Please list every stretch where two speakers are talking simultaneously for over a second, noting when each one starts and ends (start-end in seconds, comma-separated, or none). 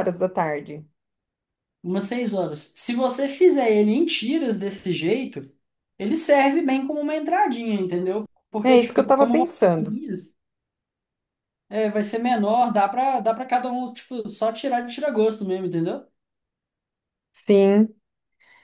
8.7-10.0